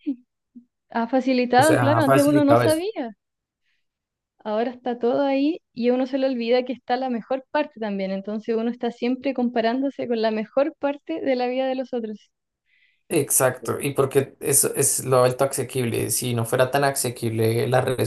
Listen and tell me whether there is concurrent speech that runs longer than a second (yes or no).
yes